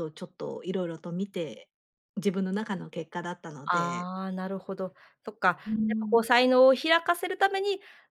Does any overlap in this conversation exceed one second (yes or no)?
no